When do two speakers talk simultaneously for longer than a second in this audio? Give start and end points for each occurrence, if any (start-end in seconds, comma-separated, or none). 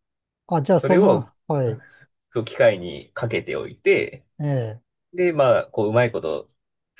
none